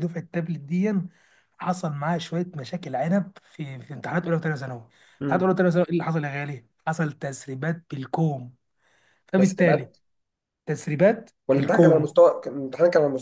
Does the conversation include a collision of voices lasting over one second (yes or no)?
no